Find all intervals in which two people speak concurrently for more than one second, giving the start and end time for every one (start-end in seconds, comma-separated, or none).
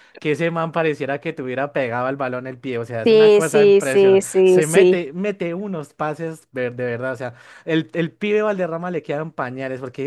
3.0-5.0